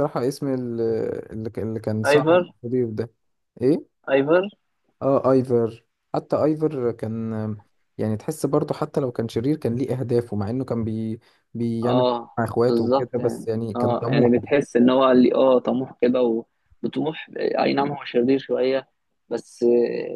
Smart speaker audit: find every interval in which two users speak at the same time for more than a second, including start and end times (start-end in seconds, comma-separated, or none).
11.8-14.4